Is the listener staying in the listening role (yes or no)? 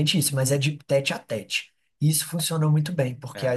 yes